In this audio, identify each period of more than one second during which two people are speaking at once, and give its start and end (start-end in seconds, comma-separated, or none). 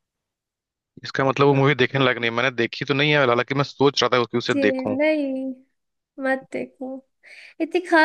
none